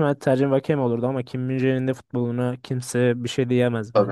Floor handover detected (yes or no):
yes